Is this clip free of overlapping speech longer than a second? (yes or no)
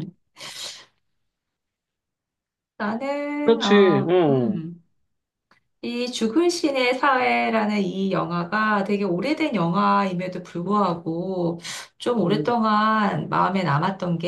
no